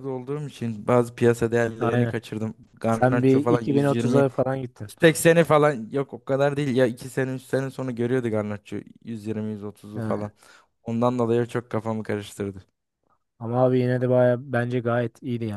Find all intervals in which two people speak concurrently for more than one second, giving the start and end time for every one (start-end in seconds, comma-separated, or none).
2.9-4.9